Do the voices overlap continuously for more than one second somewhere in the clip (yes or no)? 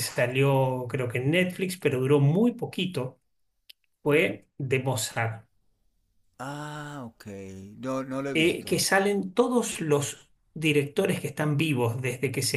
no